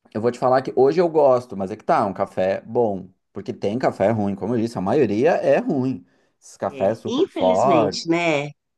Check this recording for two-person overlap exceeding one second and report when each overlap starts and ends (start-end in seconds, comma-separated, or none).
6.7-8.1